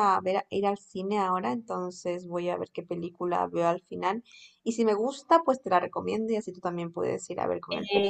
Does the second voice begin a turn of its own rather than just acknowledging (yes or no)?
yes